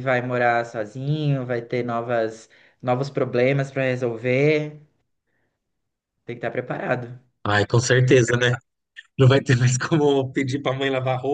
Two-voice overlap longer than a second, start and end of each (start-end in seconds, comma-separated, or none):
none